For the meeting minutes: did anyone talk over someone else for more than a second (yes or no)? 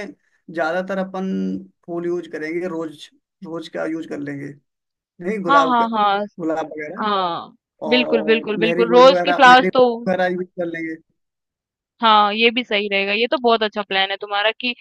yes